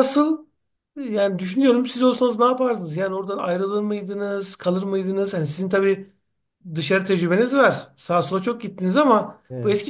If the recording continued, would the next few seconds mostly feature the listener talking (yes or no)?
no